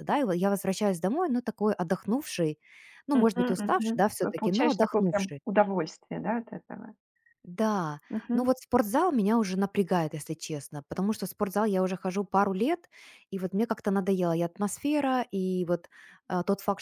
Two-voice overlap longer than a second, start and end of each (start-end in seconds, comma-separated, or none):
3.1-5.4